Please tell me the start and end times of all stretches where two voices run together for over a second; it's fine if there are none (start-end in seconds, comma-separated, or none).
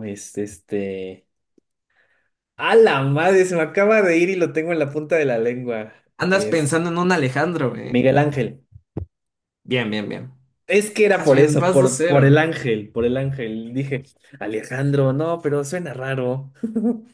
11.2-12.4